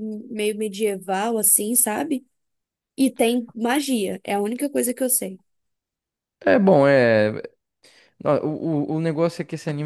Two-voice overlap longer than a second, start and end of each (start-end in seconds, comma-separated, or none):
none